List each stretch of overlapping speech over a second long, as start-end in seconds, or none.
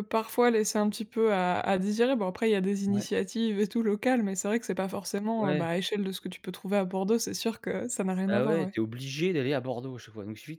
none